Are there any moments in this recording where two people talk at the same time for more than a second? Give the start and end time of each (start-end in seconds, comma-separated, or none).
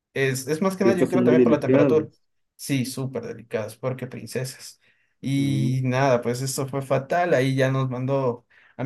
0.8-2.1